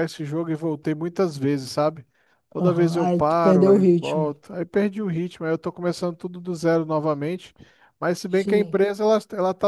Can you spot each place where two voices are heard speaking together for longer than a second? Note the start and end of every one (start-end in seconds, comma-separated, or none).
2.6-4.3